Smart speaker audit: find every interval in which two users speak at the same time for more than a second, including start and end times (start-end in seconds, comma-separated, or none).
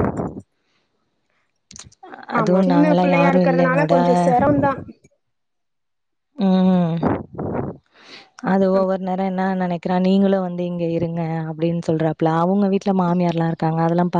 2.4-3.9